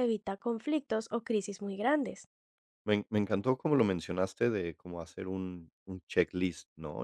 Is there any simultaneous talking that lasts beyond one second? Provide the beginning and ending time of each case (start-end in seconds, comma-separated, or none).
none